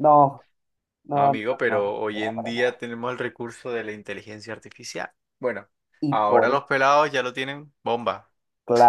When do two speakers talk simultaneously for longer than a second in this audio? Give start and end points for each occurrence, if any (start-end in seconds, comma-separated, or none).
1.1-2.7